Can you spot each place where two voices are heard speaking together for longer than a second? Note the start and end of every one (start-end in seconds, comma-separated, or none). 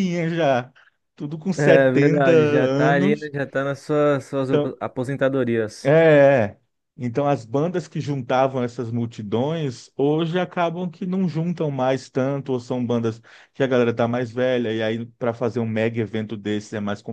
1.6-3.3